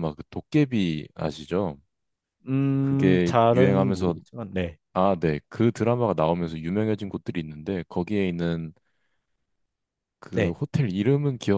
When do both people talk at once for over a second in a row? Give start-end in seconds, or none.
2.8-4.2